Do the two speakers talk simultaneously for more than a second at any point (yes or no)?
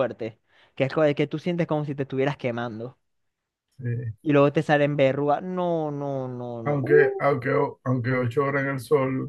no